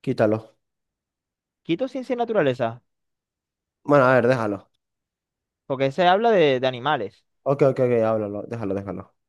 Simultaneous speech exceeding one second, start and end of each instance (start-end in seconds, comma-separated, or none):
none